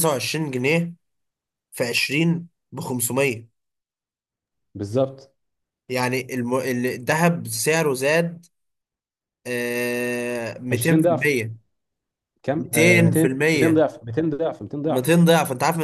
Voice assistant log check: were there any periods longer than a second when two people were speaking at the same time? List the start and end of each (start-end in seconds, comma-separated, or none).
12.6-13.8